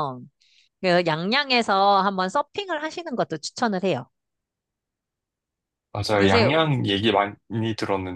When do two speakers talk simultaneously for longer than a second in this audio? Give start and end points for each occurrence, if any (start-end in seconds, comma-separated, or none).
none